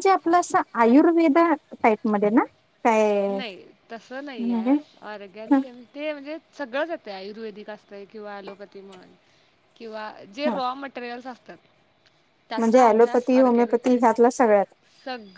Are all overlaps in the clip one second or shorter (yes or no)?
no